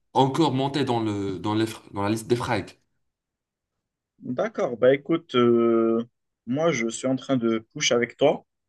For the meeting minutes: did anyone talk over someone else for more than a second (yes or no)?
no